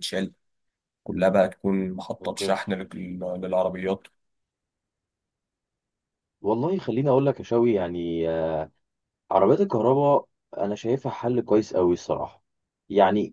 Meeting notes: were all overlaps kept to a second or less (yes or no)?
yes